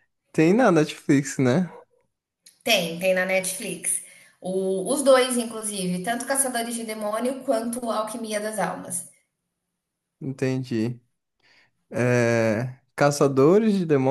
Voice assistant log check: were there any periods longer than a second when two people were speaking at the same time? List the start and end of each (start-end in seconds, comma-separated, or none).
none